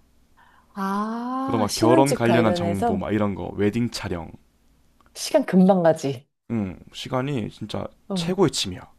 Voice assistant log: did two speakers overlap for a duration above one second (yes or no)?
yes